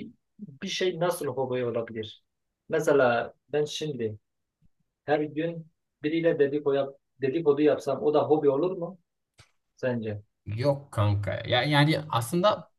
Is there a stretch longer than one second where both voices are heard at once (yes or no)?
no